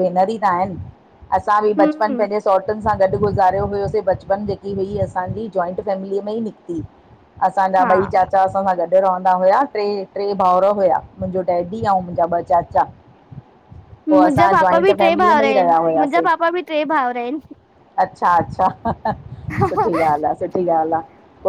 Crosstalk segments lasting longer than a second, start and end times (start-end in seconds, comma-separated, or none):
14.1-16.3